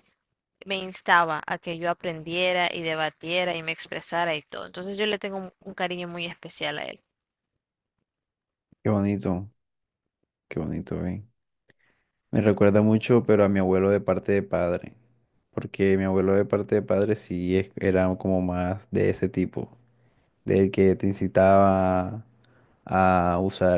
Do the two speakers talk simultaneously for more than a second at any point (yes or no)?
no